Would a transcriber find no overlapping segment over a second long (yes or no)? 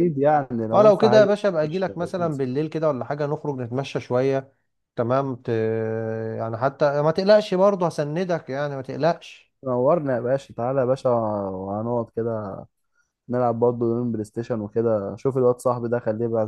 no